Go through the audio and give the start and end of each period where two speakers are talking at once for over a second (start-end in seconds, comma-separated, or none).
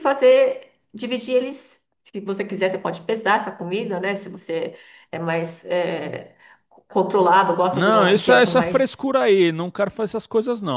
7.7-9.1